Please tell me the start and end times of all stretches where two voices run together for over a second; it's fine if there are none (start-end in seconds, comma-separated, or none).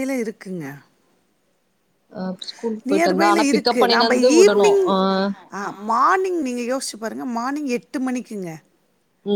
2.9-4.8